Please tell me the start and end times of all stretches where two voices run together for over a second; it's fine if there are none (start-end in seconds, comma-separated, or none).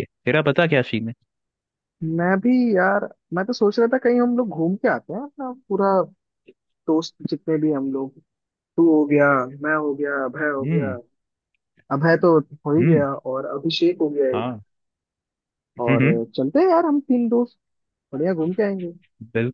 none